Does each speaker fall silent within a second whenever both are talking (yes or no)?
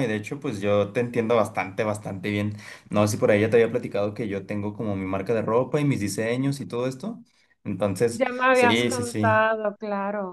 no